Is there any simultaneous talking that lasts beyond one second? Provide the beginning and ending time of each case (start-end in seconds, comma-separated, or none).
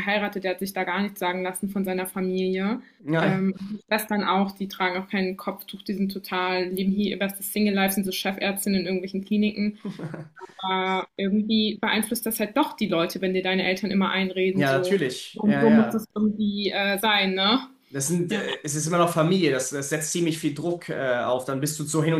14.5-16.1